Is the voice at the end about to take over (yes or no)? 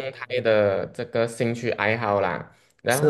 yes